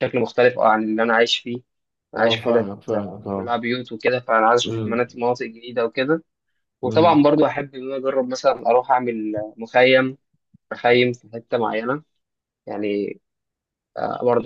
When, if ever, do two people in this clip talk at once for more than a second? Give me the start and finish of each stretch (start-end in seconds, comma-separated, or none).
2.2-3.6